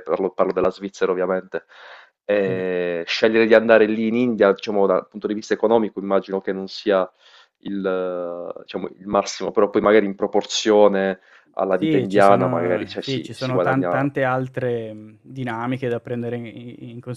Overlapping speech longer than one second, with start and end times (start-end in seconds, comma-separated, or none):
11.8-14.0